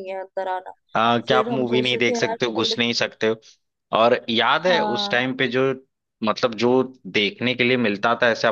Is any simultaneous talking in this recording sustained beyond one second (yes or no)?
yes